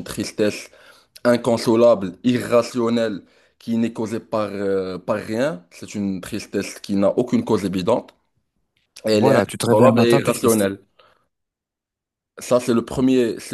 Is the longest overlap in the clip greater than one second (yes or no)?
yes